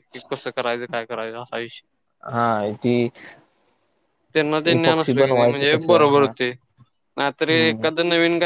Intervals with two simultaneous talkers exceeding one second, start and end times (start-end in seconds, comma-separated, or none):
4.8-6.3